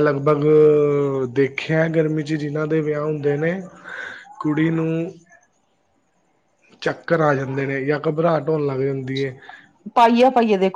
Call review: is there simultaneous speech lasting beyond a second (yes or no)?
no